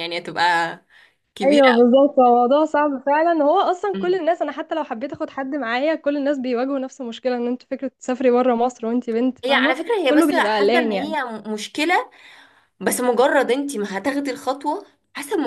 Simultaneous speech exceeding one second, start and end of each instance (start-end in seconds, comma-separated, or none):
9.4-11.2